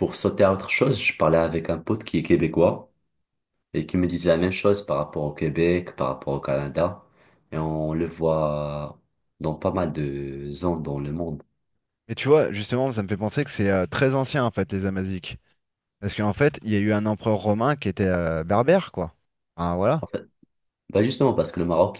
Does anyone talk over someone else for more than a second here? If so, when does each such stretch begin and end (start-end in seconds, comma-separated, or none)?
none